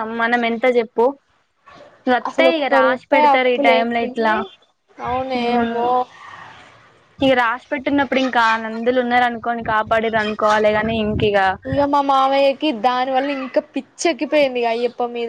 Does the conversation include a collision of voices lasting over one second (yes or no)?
yes